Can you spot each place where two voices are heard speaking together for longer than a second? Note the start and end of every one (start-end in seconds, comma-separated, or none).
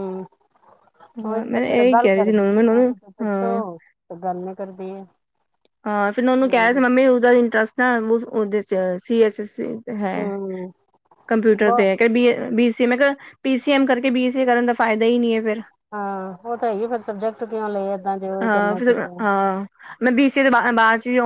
1.3-3.6